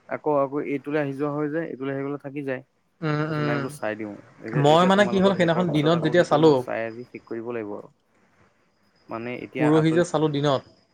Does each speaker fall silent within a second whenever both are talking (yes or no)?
no